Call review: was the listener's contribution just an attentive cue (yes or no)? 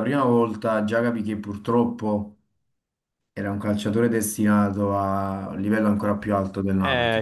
no